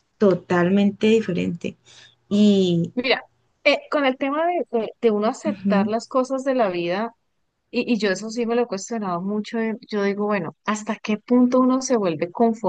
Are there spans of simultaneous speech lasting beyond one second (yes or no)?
no